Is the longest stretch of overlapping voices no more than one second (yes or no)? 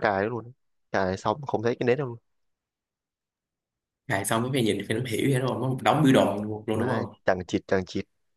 yes